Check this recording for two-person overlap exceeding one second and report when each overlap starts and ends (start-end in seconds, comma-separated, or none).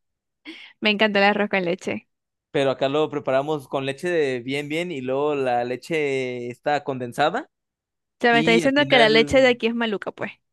8.3-9.6